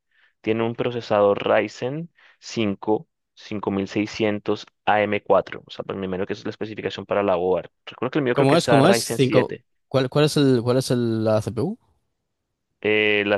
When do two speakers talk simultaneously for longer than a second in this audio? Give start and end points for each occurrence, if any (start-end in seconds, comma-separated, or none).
8.3-9.6